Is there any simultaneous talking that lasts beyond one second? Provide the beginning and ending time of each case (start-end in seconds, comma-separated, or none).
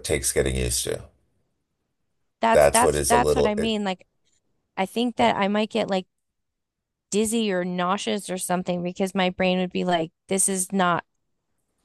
2.5-3.7